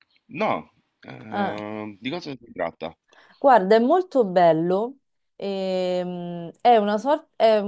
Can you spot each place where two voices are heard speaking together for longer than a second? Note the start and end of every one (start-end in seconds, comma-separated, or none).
none